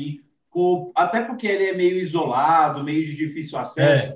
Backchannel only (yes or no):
yes